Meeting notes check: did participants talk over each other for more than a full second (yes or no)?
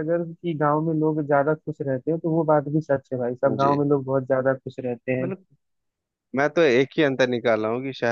no